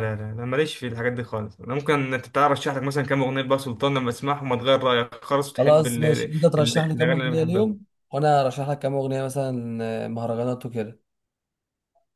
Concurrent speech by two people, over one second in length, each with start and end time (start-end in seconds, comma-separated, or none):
5.6-7.8